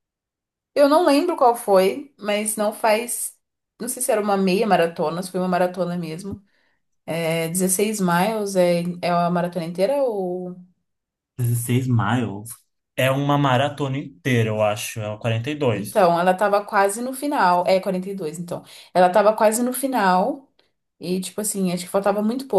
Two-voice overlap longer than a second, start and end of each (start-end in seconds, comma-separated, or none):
none